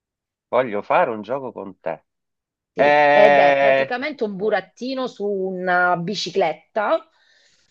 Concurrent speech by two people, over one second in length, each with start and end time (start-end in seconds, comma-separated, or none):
2.8-4.0